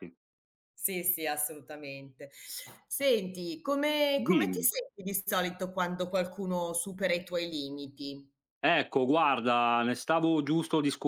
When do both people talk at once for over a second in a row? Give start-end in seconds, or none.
none